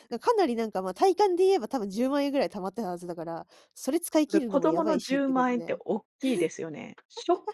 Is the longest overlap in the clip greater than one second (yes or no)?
yes